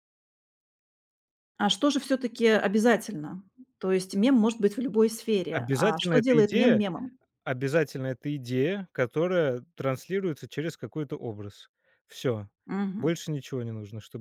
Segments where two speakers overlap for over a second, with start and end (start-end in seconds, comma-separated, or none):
5.5-6.8